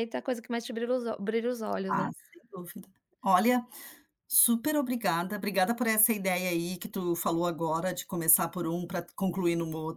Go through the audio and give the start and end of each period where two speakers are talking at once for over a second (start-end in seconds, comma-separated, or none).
none